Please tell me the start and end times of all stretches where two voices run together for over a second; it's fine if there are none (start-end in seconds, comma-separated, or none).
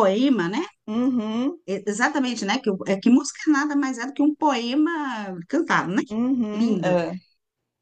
none